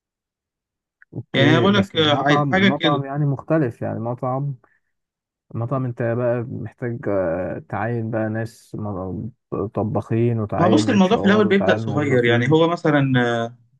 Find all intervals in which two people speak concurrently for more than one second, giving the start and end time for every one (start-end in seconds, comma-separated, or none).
1.3-3.0, 10.6-12.6